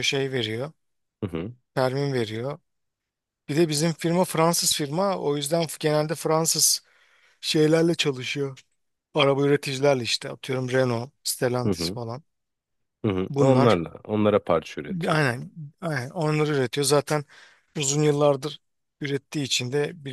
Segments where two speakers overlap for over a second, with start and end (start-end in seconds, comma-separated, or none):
none